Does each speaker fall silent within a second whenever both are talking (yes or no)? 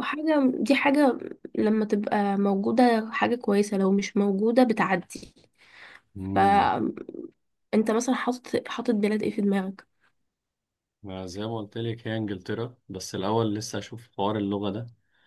yes